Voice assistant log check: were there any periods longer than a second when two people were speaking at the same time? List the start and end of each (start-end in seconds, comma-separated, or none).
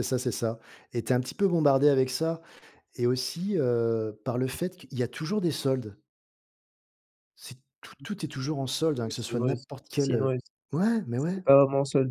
9.1-10.4